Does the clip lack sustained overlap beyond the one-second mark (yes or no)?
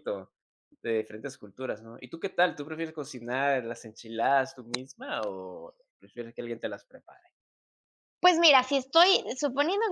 yes